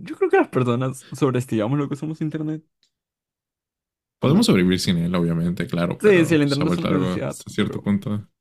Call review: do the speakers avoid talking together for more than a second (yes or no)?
no